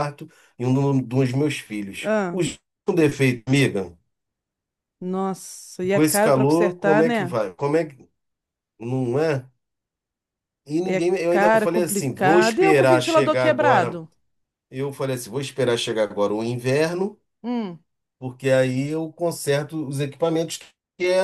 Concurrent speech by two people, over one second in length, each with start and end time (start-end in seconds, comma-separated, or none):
5.9-7.4, 10.8-14.0